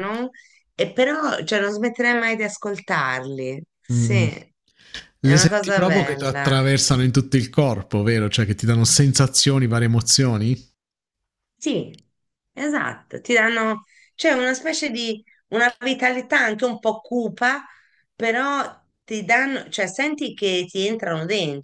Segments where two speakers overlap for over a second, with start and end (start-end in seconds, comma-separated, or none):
5.2-6.6